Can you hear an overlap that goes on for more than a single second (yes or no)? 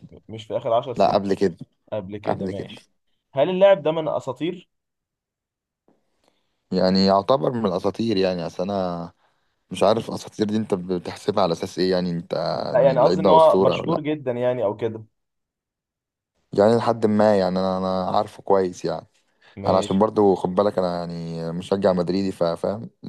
yes